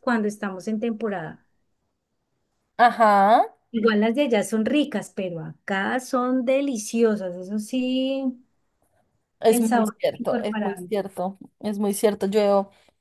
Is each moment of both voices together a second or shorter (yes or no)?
no